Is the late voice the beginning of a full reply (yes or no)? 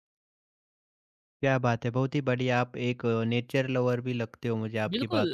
yes